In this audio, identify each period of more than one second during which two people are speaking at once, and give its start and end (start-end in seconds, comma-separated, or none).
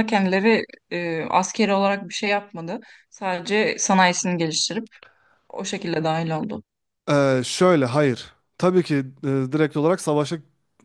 none